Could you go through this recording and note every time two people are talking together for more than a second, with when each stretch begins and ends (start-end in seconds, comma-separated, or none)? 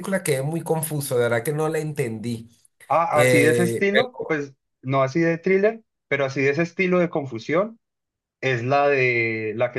3.1-4.4